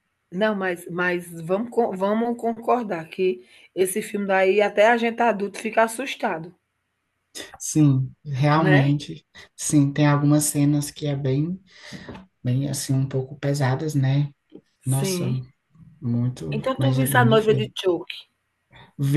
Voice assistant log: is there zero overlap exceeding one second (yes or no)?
no